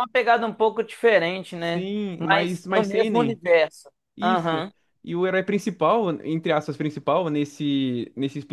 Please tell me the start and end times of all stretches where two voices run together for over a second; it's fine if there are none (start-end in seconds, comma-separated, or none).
1.6-3.4